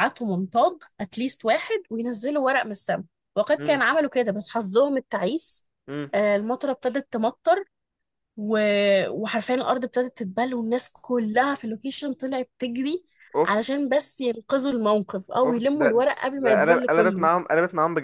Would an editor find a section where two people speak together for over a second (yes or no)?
yes